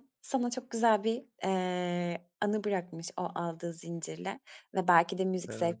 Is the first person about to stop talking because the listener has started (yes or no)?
no